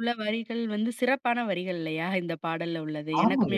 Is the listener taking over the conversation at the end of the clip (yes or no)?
yes